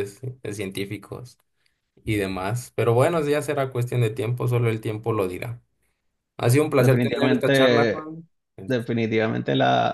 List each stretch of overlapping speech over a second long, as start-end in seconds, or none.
6.8-8.1